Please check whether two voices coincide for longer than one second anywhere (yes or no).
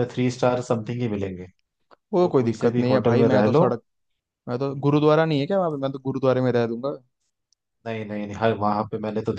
yes